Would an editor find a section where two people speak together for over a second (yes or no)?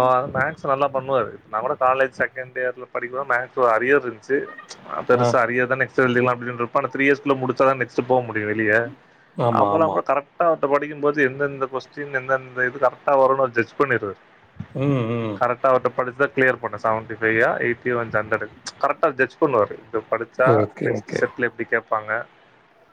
no